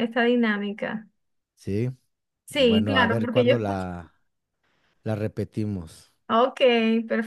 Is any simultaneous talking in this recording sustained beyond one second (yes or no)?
yes